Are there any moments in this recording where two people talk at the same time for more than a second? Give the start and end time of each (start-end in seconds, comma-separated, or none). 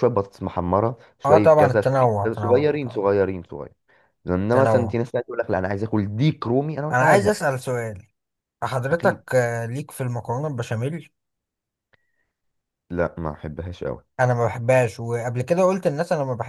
1.2-3.1